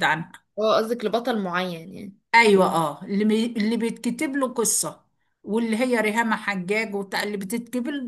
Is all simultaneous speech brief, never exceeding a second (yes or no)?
yes